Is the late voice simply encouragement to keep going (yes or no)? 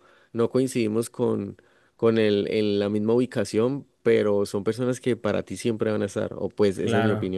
no